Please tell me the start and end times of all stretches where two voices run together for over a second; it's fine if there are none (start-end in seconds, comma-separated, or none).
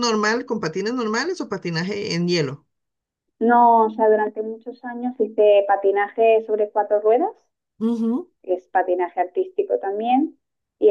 none